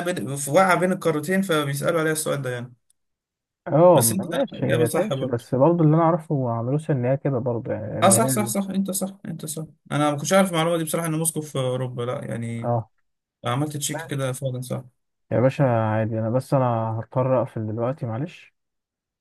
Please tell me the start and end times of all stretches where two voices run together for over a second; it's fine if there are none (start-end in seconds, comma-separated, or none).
3.9-5.5